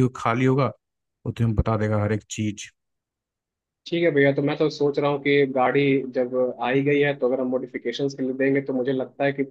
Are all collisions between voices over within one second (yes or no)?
yes